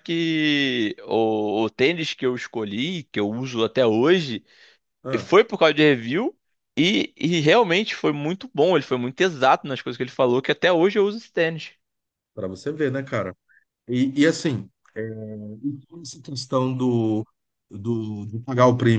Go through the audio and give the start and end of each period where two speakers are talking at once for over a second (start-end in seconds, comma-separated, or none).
none